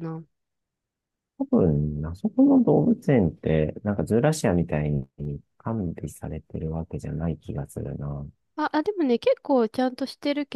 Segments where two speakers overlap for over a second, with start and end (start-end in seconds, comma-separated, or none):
none